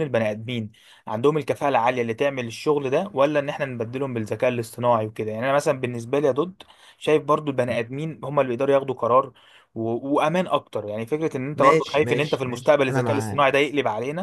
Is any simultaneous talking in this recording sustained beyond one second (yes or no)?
yes